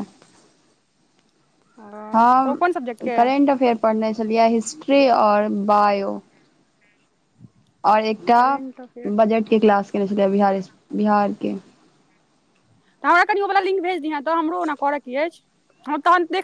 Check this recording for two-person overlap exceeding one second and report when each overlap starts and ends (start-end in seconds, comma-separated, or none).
none